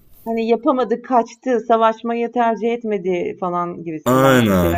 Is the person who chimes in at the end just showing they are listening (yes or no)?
no